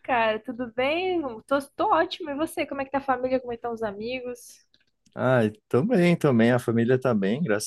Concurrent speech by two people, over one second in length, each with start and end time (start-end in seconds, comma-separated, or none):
none